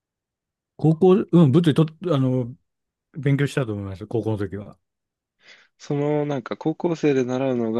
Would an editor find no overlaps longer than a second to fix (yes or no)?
yes